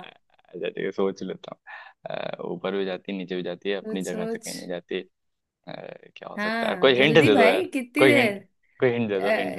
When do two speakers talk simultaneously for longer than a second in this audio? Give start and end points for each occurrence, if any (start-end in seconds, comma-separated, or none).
6.3-8.3